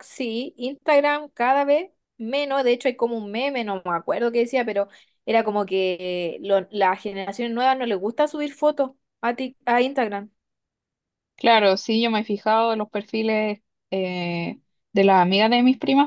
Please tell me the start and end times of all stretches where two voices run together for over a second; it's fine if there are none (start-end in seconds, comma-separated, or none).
none